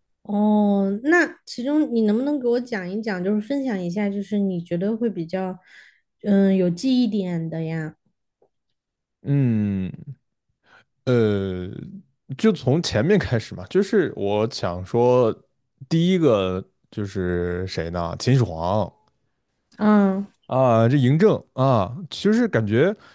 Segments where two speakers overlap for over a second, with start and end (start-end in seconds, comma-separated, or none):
none